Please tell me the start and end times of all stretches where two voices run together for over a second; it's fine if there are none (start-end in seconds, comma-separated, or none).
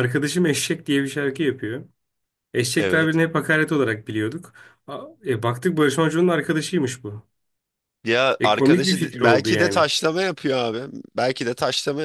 8.4-9.9